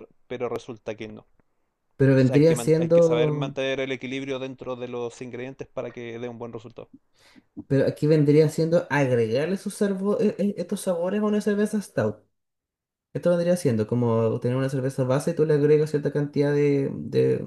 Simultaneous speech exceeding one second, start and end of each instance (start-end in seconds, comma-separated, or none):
2.2-3.5